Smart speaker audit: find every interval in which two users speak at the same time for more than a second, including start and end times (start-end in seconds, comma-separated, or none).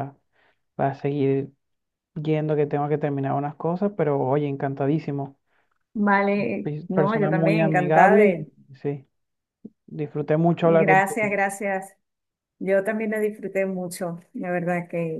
6.6-8.5